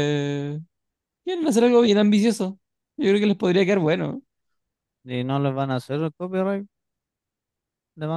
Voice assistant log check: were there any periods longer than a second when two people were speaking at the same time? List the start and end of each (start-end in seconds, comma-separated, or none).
none